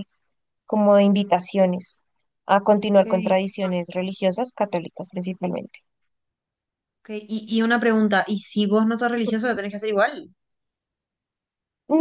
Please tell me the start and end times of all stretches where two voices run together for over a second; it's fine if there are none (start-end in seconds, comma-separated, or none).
none